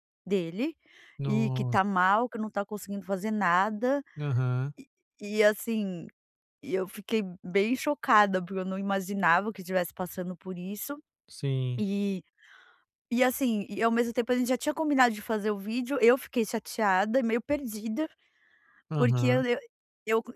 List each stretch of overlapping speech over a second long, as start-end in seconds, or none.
none